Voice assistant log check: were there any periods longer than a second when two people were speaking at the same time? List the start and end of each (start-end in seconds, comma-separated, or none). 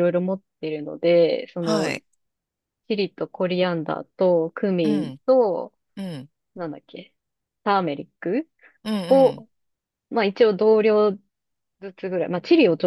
none